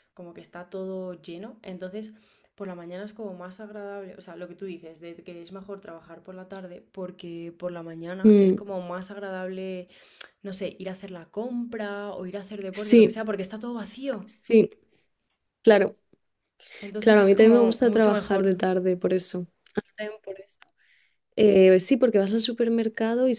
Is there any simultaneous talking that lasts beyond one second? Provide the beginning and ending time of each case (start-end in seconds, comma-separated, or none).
17.0-18.6